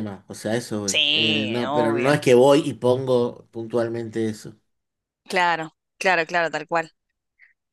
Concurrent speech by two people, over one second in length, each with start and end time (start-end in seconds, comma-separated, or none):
0.9-2.2